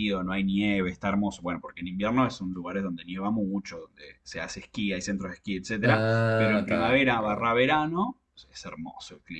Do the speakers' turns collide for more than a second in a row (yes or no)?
yes